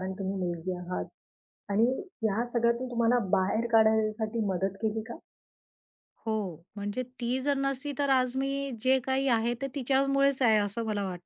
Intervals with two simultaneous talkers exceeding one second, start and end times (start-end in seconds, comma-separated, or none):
none